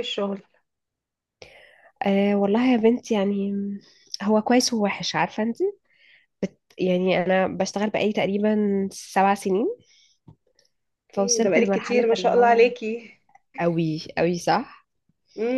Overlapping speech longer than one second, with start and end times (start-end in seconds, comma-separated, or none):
11.2-12.6